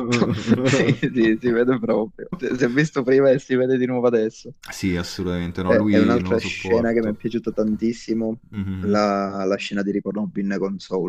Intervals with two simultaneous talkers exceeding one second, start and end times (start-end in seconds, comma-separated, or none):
5.7-7.2